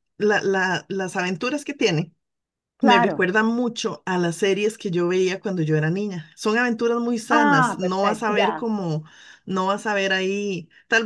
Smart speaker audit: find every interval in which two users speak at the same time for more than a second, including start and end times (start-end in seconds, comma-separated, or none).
7.3-8.7